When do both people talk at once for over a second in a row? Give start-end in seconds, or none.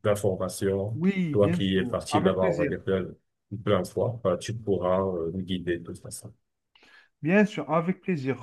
0.9-2.7